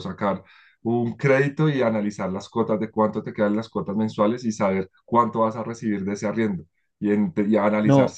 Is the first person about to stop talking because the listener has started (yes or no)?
no